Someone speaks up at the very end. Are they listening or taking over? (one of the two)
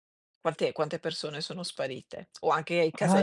taking over